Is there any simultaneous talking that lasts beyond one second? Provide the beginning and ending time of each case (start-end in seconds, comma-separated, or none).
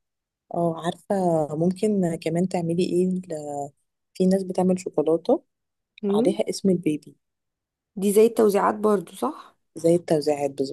none